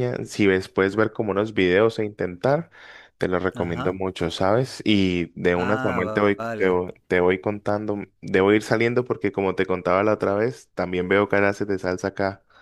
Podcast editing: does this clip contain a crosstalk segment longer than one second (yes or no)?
yes